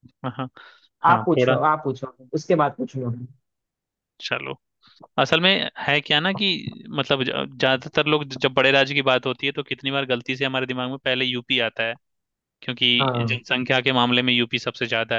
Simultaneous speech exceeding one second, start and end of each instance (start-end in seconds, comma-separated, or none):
none